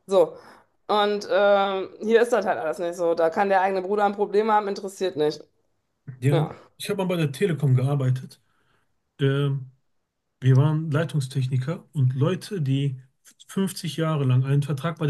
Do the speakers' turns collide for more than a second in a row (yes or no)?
no